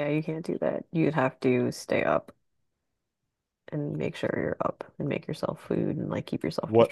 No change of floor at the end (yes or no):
no